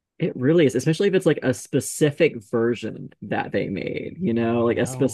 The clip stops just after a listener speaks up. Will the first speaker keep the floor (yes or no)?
yes